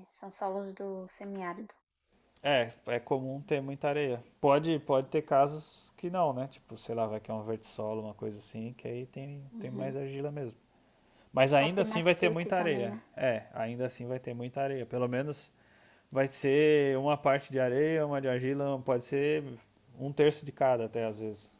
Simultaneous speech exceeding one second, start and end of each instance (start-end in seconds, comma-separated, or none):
11.6-13.0